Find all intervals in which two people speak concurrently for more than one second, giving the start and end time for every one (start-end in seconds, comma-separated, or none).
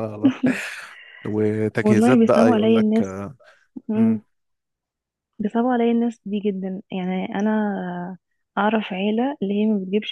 1.8-3.0